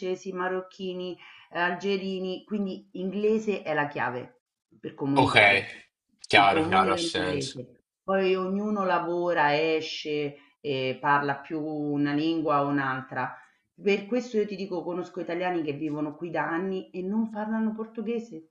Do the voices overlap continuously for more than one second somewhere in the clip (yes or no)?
yes